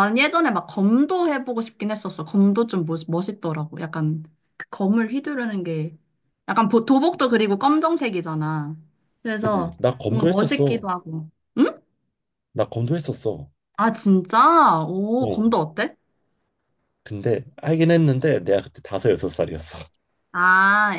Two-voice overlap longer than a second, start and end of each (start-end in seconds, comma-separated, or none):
9.4-10.9